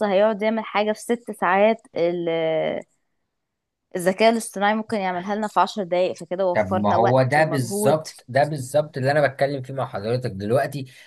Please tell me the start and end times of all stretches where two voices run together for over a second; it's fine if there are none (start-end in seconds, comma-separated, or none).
6.5-8.1